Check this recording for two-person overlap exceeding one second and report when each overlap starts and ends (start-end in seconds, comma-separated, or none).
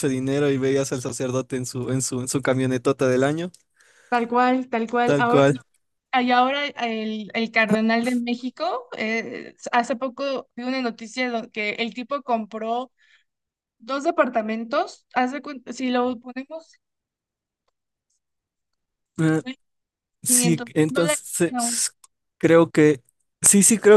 20.2-21.7